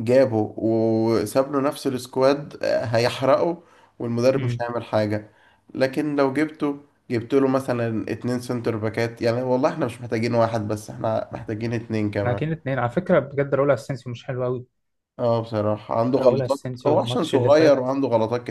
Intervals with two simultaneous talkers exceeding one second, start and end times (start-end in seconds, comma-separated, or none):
16.2-17.9